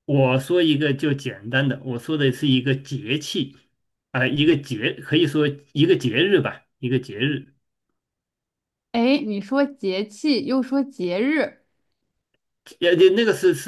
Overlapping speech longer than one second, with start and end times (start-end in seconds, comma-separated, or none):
none